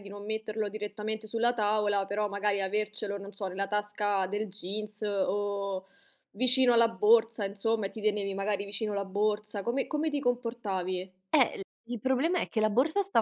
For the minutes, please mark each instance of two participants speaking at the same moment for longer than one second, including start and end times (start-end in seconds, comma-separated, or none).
none